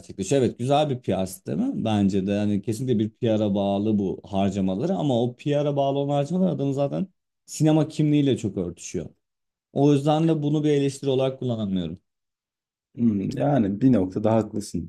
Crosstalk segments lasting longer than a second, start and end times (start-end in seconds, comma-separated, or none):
none